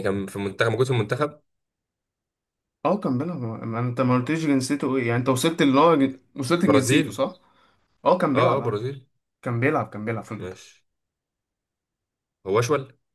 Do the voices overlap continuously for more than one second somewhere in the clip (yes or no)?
no